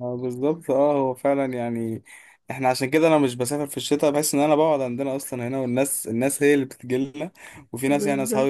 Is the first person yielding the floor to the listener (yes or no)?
no